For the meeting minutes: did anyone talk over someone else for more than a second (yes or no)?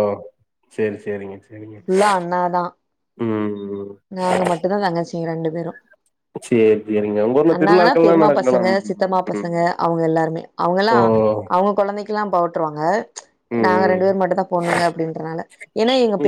yes